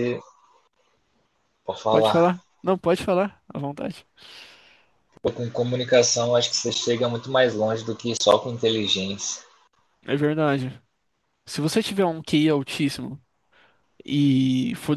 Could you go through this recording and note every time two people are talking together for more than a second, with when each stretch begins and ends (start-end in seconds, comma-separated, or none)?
none